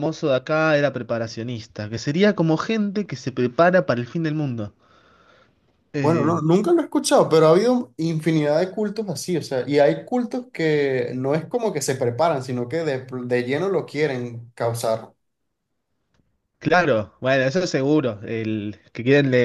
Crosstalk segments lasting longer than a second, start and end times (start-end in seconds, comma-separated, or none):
none